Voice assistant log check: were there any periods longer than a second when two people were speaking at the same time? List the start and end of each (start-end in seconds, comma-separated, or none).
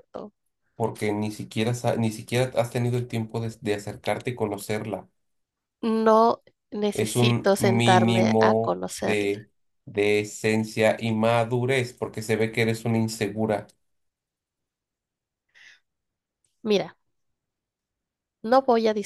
6.9-9.4